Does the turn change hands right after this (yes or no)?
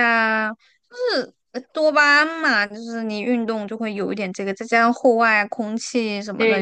yes